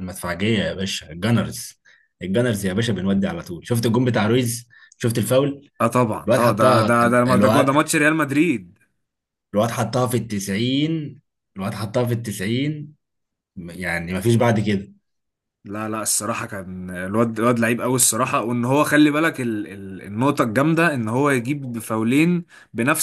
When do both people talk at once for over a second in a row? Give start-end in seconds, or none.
6.3-7.8